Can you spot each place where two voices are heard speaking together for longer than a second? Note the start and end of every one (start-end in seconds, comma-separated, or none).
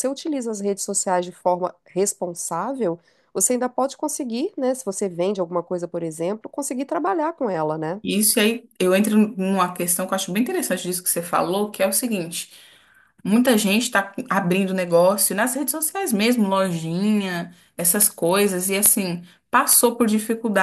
none